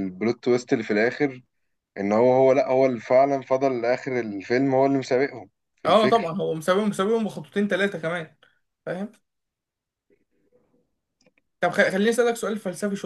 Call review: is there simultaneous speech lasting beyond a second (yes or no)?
no